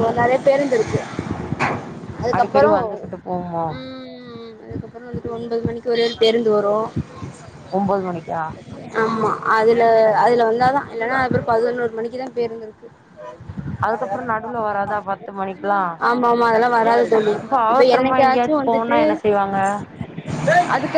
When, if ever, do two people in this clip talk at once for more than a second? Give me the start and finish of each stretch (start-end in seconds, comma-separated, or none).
18.0-19.2